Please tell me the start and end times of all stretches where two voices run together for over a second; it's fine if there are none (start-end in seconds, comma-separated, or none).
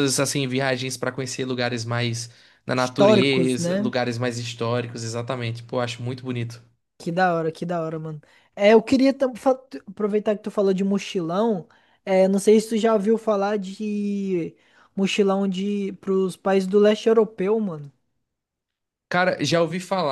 2.7-3.9